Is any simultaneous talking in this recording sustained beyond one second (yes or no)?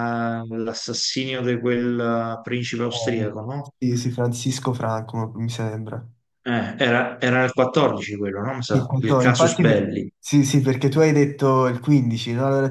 yes